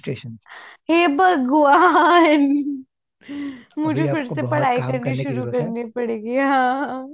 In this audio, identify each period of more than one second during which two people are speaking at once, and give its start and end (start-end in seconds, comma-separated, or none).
3.9-5.7